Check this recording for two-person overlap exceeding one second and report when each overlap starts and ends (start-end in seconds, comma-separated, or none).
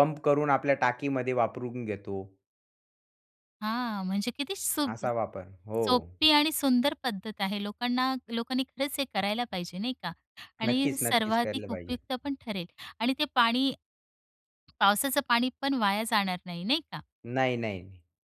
10.6-12.0